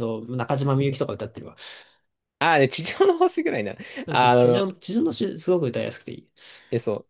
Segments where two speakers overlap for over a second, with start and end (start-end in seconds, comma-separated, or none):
none